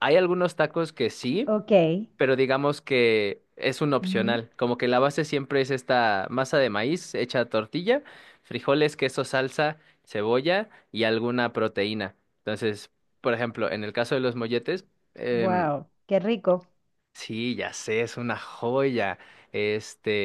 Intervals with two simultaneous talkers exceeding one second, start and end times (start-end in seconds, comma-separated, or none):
none